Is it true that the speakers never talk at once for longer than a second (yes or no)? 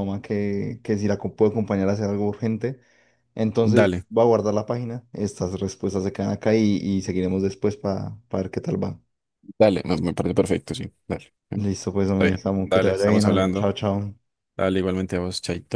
no